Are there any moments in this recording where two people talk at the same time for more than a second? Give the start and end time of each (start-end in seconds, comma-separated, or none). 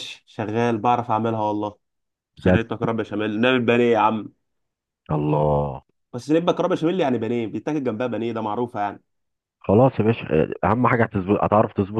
none